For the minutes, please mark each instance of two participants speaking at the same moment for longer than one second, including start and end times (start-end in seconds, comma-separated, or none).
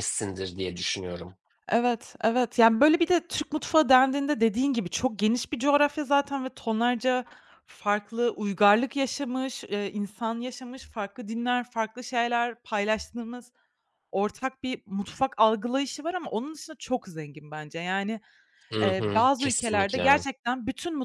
18.8-20.2